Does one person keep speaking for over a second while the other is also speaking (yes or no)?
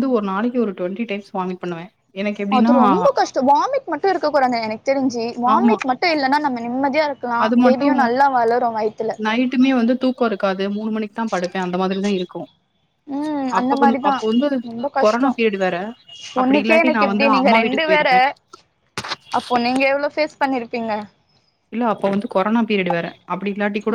yes